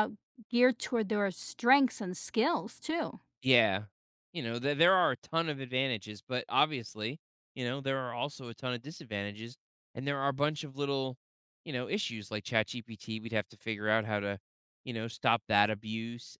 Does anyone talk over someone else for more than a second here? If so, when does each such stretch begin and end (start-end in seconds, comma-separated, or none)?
none